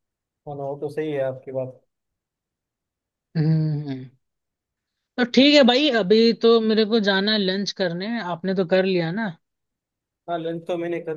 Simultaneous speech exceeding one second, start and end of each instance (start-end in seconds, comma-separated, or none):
none